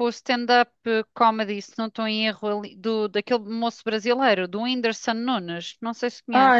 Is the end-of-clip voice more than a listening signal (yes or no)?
yes